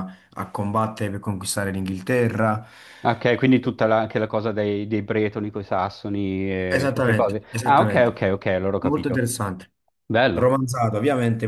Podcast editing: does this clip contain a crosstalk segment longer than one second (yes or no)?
yes